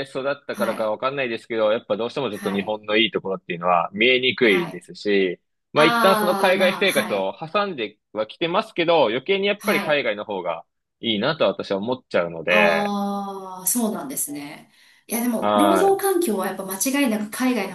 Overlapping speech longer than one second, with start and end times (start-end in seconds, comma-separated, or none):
5.8-7.3